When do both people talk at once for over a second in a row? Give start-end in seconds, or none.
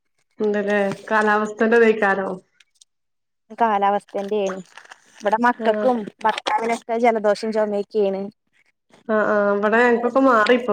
none